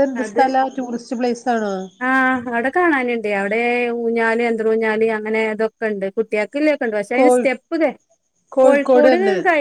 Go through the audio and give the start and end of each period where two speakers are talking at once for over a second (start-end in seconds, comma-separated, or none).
none